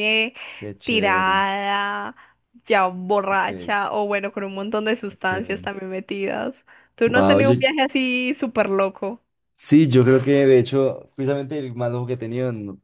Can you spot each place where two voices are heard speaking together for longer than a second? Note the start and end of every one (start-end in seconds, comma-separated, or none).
none